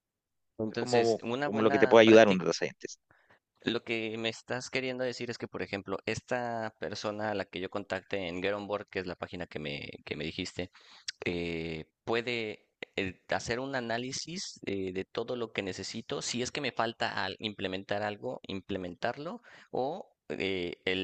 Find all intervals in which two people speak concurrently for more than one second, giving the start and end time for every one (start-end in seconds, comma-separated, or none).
0.7-2.4